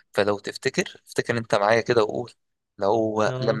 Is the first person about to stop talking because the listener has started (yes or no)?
no